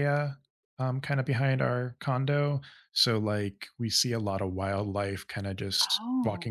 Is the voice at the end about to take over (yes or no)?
no